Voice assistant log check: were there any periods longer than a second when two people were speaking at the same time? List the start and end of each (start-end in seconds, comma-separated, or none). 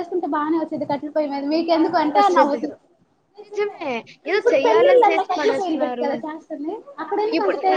4.4-6.1